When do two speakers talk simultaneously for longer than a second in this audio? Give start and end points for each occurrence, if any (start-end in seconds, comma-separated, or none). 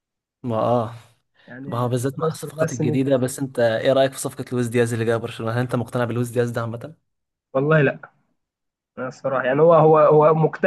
1.7-3.2